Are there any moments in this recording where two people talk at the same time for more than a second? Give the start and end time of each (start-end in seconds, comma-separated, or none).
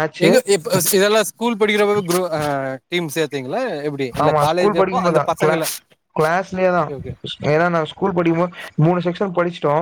none